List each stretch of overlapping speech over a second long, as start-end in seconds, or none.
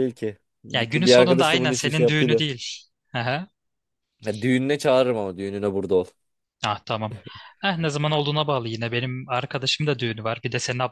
0.7-2.4